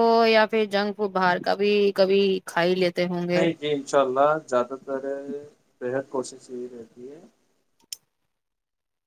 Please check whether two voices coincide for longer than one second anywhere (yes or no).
no